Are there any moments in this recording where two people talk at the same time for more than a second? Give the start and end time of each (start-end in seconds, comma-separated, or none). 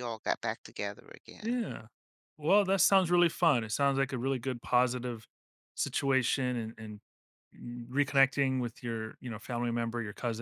none